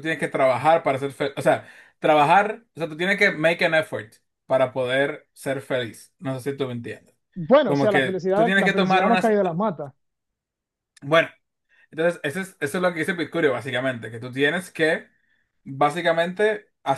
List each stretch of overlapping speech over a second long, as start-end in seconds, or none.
7.7-9.3